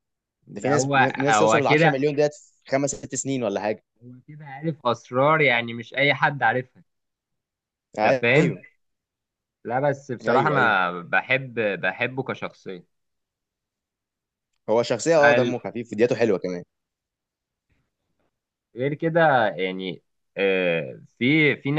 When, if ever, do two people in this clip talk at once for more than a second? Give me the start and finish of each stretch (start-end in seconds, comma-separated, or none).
0.6-2.0